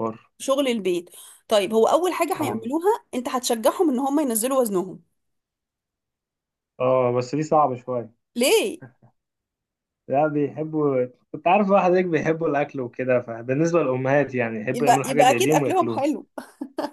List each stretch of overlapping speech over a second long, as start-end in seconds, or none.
14.7-16.0